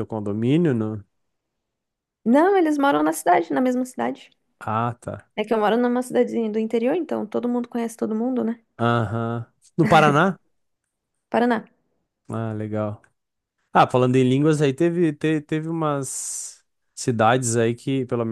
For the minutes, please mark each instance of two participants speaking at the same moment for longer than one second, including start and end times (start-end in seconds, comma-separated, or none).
none